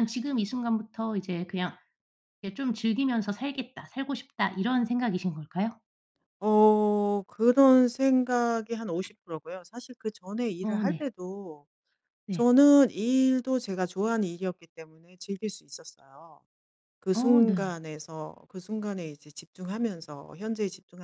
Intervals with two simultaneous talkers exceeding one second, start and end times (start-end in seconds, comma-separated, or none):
none